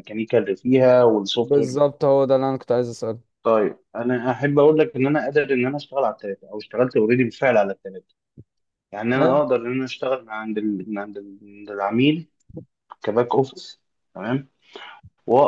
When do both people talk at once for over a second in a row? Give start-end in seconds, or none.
none